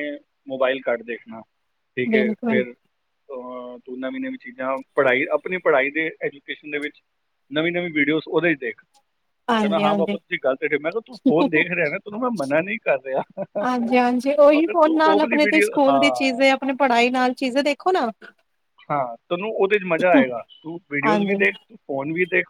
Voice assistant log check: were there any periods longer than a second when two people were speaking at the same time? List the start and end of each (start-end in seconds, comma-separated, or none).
14.6-16.4